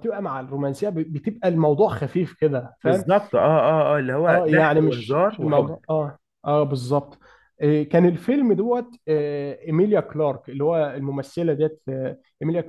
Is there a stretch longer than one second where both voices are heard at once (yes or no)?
yes